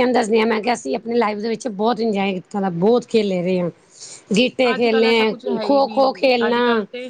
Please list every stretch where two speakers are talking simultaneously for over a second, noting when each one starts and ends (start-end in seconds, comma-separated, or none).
4.7-6.6